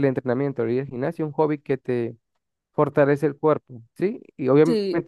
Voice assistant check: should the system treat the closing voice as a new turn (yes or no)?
no